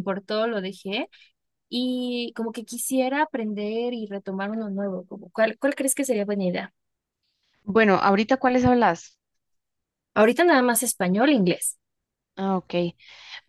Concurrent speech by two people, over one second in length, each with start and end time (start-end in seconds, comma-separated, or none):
none